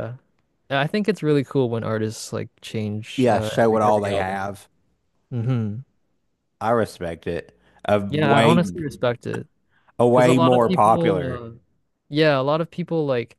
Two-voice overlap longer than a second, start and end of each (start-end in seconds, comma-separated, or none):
3.2-4.6, 10.1-11.4